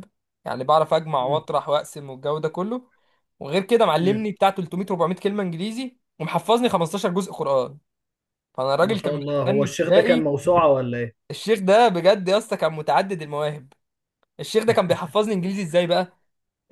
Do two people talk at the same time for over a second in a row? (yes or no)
yes